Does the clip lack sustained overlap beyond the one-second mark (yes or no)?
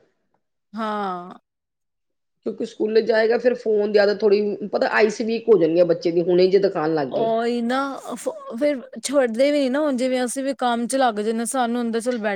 yes